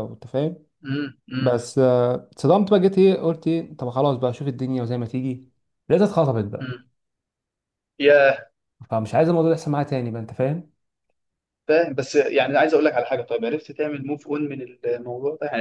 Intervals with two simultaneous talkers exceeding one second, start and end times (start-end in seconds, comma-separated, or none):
none